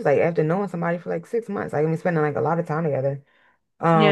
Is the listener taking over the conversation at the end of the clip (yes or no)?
yes